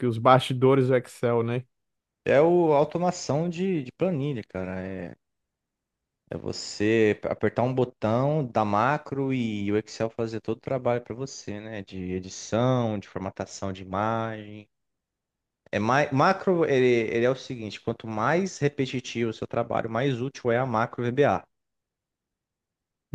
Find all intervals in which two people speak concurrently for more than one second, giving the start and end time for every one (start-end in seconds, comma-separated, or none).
none